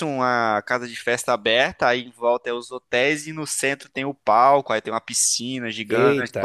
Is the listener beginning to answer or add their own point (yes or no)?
no